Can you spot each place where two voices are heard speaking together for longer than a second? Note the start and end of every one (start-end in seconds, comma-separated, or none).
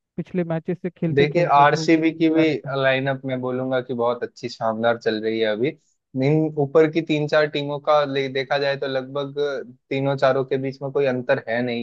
1.1-2.8